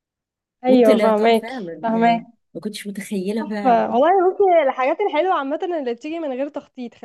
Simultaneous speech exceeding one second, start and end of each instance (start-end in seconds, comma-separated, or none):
0.7-2.1